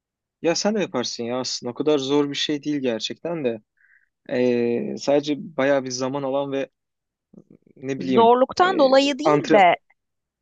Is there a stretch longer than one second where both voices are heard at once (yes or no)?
yes